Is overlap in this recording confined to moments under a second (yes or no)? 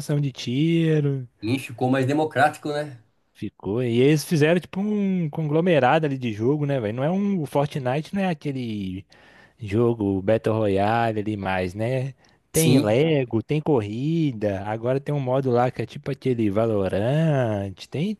yes